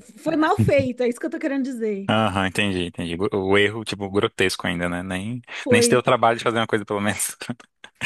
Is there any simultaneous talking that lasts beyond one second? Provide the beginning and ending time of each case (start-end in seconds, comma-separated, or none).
none